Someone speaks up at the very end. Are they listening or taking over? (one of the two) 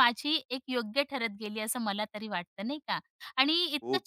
listening